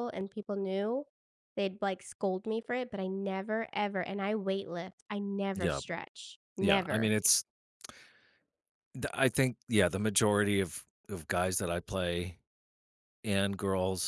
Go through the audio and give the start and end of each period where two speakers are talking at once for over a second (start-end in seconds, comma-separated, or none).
none